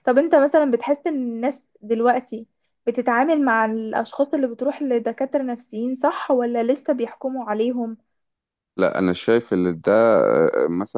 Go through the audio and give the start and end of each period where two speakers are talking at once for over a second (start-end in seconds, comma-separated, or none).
none